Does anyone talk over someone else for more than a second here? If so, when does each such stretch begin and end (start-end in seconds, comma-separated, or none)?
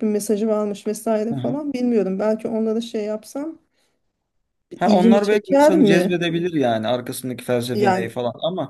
4.8-6.3